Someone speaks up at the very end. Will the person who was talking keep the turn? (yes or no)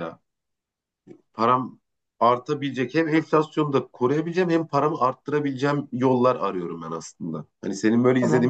no